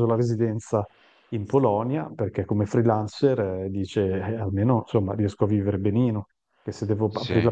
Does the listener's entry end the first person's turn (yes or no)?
no